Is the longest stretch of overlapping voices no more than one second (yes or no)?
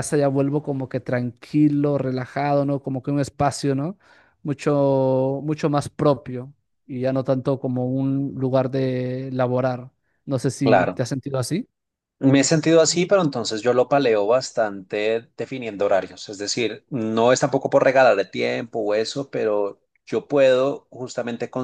yes